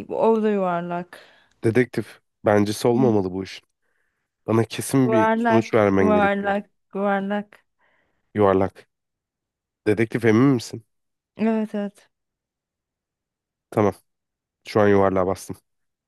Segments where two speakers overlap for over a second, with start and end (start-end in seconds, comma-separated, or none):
5.0-6.6